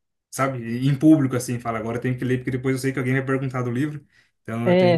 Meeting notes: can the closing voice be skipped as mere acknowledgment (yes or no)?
no